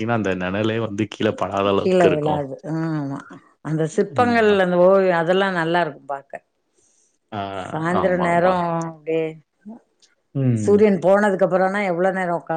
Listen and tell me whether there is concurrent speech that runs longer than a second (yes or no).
no